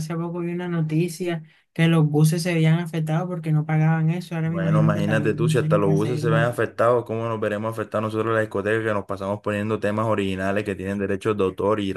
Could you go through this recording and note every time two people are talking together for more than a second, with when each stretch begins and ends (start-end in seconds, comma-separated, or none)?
4.4-6.5